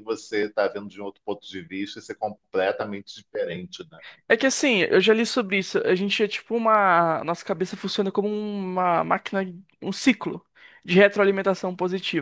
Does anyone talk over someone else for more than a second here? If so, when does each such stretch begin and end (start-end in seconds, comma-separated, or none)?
none